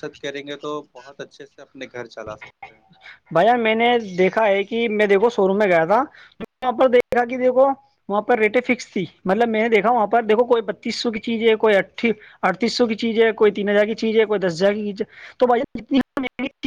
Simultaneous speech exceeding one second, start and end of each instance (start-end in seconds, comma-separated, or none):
none